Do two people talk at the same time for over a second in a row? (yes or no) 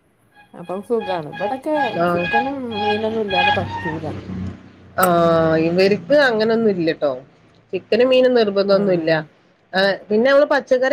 no